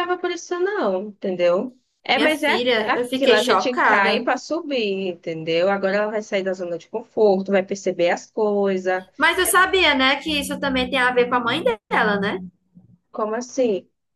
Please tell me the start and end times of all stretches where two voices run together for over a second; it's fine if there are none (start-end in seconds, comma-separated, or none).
2.1-4.2